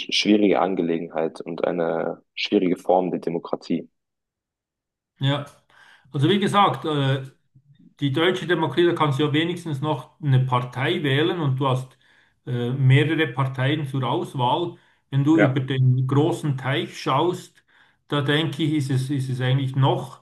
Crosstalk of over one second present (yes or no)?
no